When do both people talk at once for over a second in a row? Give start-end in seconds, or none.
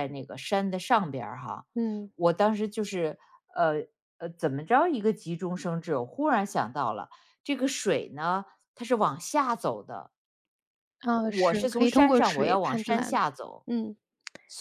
11.2-13.2